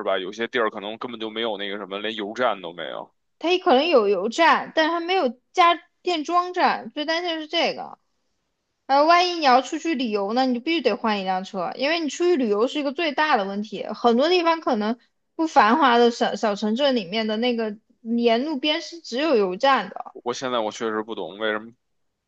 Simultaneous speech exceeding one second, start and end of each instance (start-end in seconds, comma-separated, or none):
none